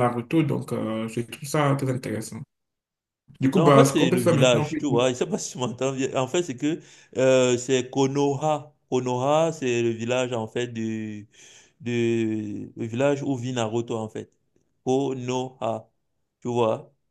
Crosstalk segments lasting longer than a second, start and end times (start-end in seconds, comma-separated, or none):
3.5-4.8